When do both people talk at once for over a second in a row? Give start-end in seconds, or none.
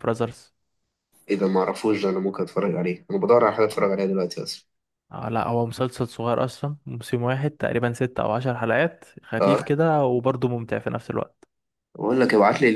none